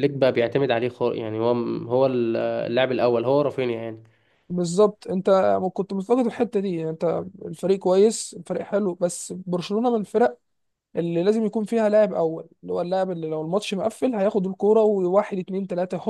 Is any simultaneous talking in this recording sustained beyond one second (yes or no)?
no